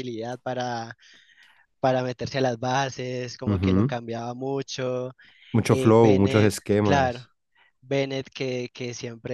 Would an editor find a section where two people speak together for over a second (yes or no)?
yes